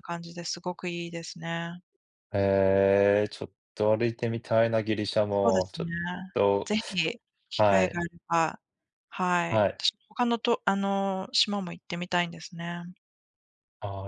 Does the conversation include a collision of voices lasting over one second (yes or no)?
no